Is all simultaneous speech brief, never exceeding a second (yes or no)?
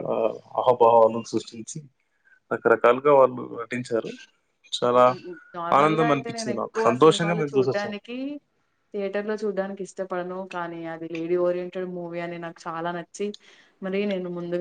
no